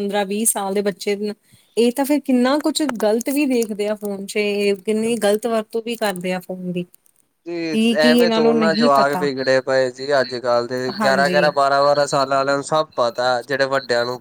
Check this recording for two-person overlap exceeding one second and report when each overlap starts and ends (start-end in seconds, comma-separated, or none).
7.5-9.3